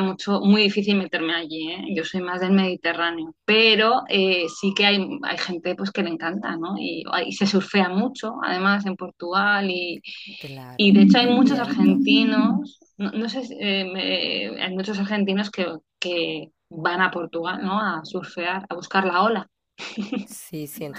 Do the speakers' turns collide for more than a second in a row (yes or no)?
yes